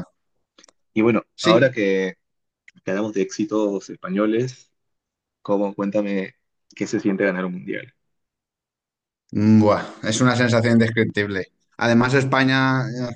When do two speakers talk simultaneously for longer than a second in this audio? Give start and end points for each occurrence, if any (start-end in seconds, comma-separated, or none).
none